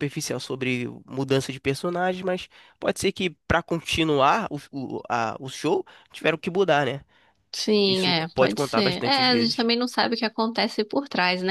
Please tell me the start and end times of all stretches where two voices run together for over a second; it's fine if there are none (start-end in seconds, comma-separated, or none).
7.8-9.7